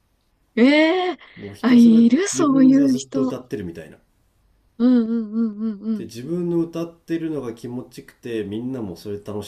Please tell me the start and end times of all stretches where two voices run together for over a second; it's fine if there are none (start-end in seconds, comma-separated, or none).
1.6-3.4